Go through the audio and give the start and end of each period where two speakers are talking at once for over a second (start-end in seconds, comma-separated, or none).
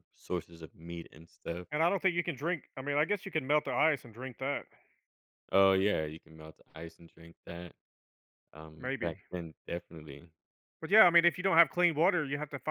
none